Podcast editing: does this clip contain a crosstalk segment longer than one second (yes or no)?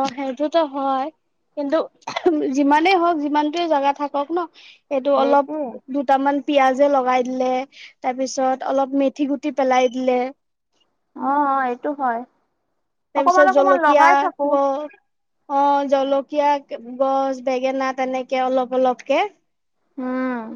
yes